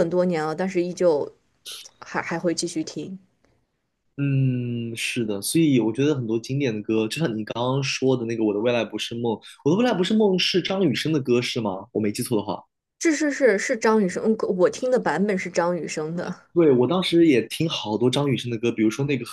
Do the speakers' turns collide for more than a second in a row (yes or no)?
no